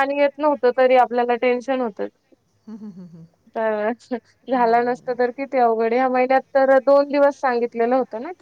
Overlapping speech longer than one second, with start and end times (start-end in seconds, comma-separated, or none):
none